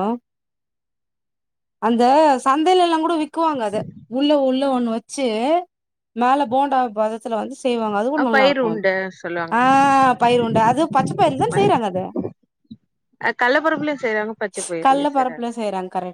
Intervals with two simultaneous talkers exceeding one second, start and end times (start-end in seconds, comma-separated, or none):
none